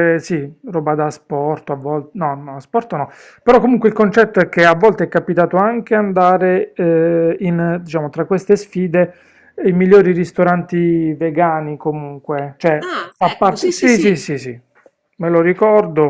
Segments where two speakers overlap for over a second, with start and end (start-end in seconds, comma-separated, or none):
12.8-14.3